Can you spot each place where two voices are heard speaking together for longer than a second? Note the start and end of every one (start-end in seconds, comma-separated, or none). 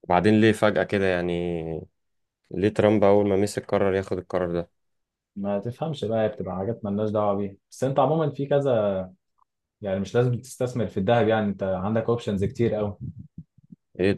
none